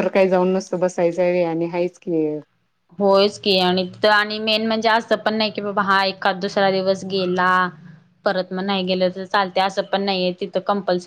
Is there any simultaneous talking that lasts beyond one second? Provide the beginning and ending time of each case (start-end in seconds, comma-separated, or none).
none